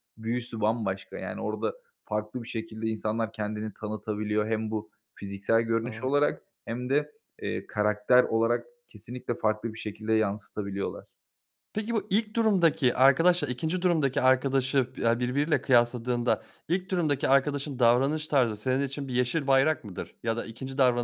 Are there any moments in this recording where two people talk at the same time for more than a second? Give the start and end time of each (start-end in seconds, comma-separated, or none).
none